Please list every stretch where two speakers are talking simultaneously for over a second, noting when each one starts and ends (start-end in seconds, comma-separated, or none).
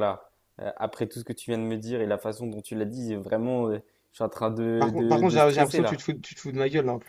4.8-6.0